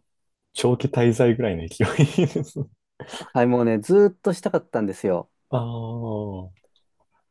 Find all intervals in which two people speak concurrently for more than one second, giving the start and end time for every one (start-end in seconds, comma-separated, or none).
none